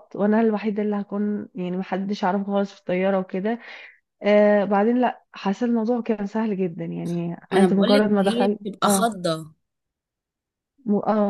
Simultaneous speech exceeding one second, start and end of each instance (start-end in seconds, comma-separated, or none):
7.5-9.1